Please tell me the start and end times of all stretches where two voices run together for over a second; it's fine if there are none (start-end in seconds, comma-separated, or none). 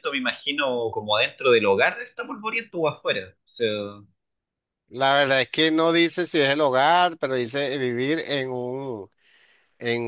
none